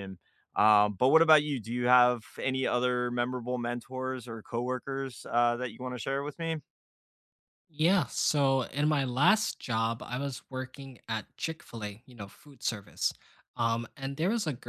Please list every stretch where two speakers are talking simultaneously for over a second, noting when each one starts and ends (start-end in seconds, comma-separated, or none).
none